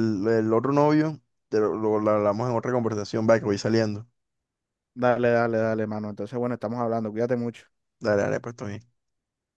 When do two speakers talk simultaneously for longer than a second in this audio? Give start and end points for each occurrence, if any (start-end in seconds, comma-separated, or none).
none